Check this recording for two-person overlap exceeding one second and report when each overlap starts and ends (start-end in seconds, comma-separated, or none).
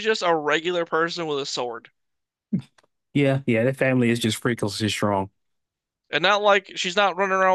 none